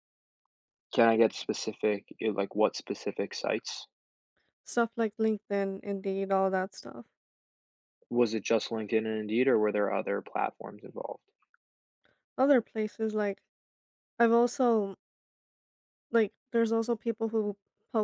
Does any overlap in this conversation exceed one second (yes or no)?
no